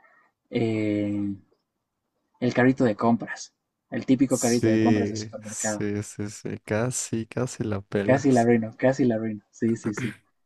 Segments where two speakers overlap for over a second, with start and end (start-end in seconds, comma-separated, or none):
4.3-5.8